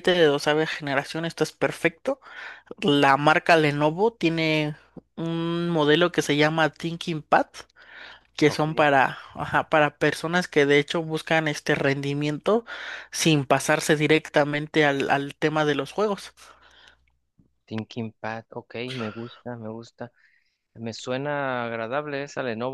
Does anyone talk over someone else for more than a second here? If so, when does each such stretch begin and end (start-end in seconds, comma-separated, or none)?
none